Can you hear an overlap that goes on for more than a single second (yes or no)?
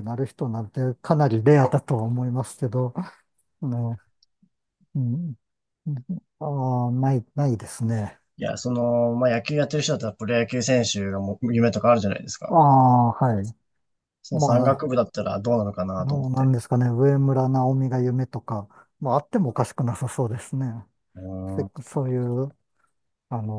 no